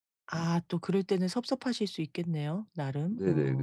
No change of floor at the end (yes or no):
no